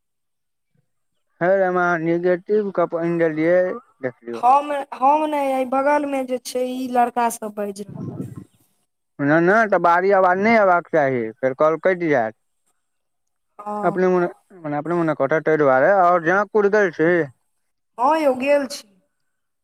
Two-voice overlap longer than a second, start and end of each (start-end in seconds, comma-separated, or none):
none